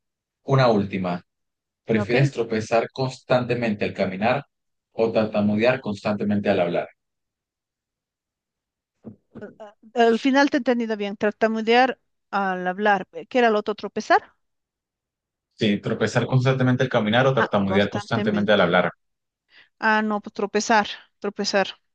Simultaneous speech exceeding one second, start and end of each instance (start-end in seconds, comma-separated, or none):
17.4-18.6